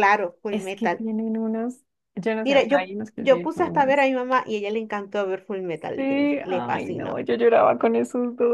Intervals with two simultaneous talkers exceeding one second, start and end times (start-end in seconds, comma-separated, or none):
2.4-4.1, 6.0-7.3